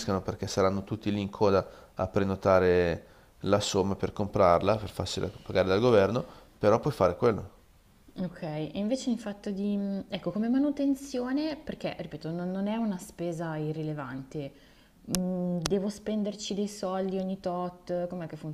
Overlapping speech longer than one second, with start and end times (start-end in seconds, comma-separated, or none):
none